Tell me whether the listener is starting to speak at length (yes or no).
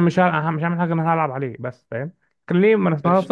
no